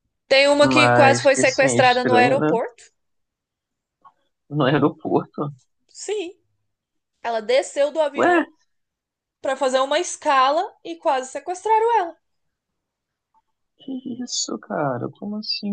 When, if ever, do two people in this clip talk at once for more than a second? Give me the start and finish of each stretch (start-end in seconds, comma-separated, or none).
0.6-2.5